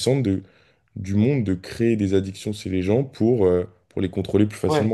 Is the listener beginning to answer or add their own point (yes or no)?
yes